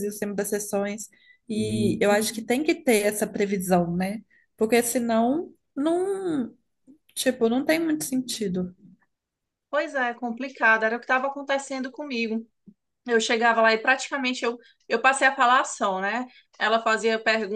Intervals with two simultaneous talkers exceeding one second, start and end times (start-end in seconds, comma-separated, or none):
none